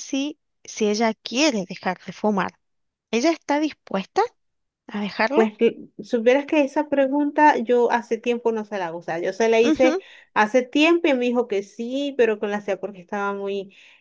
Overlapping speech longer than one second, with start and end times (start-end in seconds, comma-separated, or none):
none